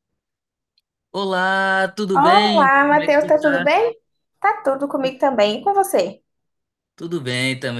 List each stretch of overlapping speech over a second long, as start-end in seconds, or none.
2.1-3.7